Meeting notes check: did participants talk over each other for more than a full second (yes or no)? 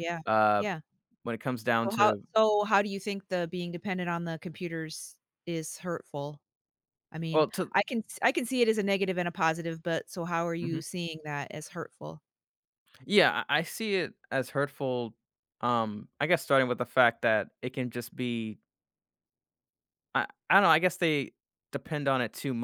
no